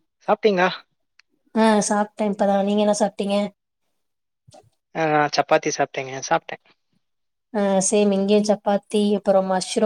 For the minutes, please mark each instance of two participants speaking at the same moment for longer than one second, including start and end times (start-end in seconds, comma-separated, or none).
none